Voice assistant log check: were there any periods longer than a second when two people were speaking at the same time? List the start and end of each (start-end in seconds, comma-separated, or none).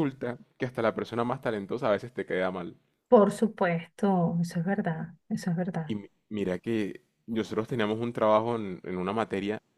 none